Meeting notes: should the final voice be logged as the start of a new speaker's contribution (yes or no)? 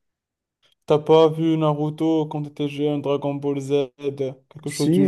yes